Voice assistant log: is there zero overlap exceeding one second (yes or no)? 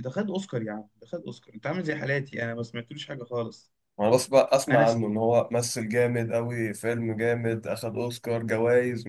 yes